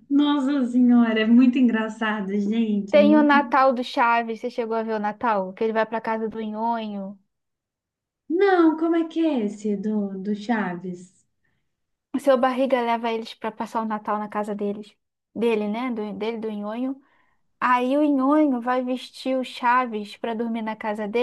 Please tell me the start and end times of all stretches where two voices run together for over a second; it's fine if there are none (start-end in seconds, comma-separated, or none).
none